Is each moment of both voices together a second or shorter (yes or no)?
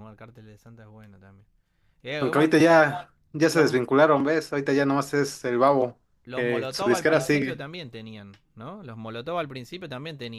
no